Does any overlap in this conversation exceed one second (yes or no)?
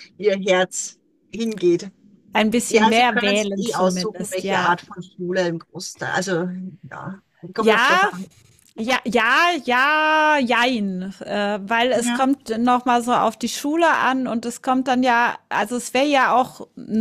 yes